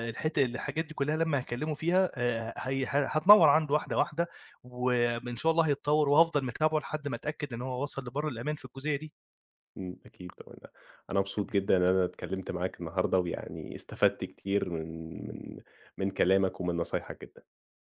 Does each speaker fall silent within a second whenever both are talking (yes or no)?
yes